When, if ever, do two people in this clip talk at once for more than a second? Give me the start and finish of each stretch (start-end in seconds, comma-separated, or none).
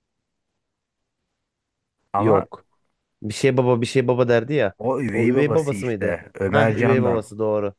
5.1-7.2